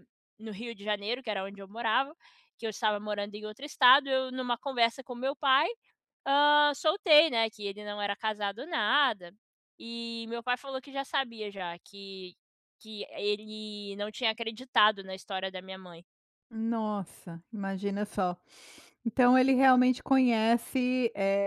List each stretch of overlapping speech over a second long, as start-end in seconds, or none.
none